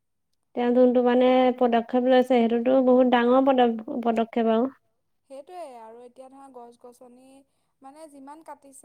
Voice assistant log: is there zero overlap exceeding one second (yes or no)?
yes